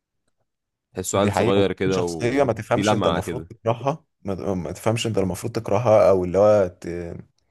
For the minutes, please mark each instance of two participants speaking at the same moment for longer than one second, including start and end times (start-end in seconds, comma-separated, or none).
1.1-3.5